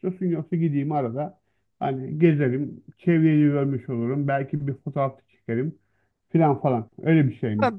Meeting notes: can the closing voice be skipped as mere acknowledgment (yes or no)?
no